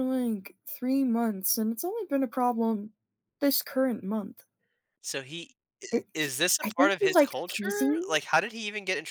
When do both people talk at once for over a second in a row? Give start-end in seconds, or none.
5.9-8.2